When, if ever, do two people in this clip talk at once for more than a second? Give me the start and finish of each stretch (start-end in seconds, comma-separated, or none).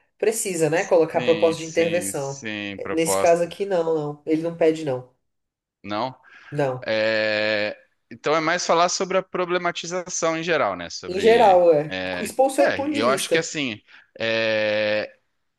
1.1-3.5, 11.1-13.4